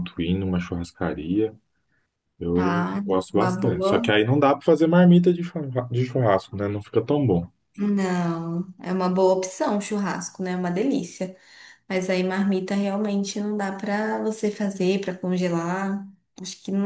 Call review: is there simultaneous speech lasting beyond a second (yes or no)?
yes